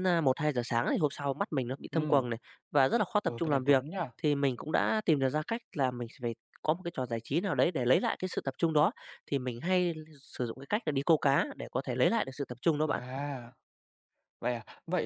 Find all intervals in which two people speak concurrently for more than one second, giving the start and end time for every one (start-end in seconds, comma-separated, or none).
none